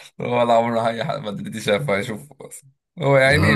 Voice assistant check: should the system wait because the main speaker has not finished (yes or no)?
yes